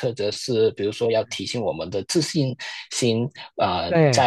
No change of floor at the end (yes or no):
yes